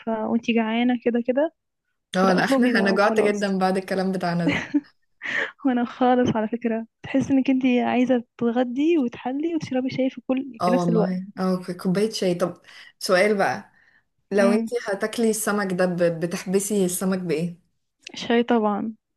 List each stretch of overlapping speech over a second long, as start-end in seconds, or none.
2.1-3.5